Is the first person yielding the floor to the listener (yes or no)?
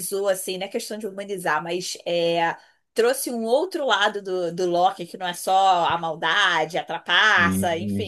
no